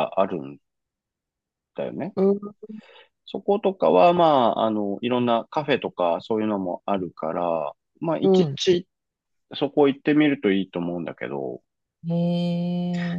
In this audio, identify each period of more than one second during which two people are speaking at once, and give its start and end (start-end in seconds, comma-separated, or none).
none